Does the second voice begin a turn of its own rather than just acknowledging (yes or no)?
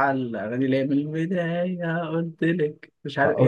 yes